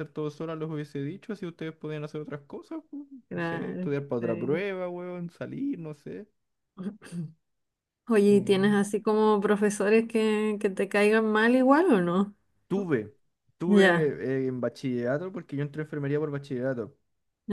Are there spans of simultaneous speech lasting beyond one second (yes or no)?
yes